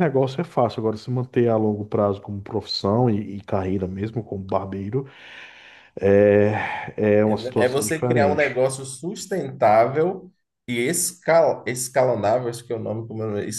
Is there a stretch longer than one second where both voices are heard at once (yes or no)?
yes